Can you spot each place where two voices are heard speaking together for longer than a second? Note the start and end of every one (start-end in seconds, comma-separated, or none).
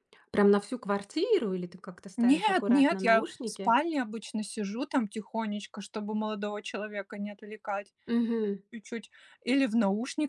2.2-3.8